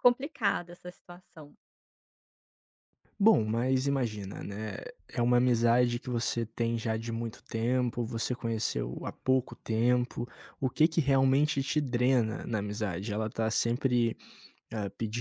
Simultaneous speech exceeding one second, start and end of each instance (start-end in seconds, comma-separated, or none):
none